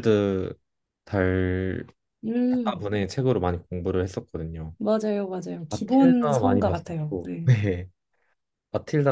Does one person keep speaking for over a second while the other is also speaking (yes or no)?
yes